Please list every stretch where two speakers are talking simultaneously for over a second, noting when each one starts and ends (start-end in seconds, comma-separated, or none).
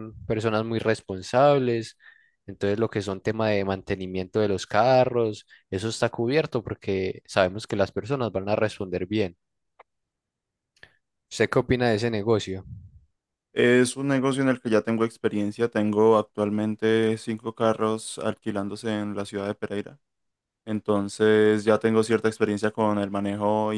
none